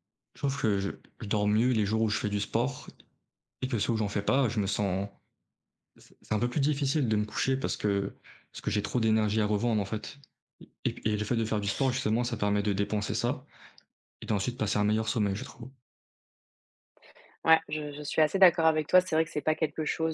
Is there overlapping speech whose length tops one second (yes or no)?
no